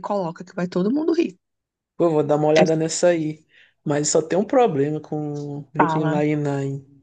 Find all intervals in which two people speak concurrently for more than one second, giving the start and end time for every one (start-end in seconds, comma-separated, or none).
none